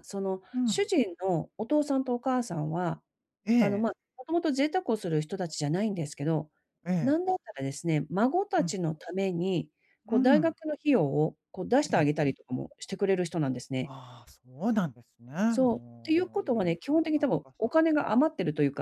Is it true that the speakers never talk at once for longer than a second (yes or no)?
no